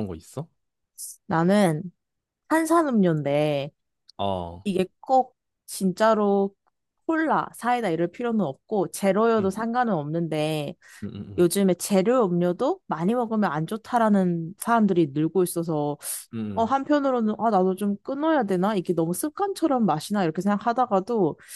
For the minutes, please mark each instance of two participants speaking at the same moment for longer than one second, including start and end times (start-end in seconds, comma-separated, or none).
none